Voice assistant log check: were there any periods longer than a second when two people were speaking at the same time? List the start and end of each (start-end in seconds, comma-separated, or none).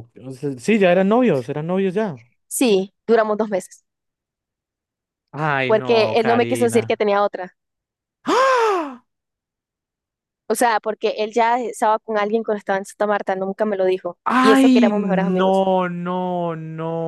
5.7-7.0, 14.2-15.6